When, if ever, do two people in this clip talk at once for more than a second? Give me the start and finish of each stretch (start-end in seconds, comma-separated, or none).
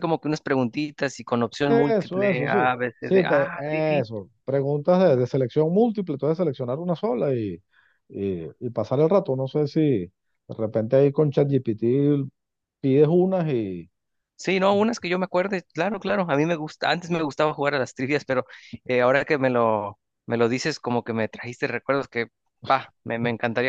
1.8-4.1